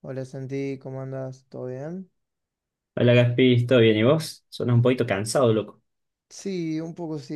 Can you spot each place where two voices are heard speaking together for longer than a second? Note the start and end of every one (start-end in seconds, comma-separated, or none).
none